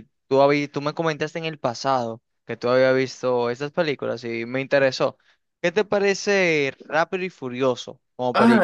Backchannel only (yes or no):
no